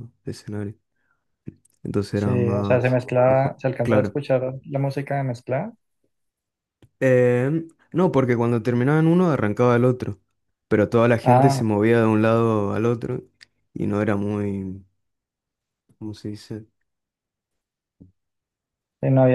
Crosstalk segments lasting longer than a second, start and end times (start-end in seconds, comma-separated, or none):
2.1-4.2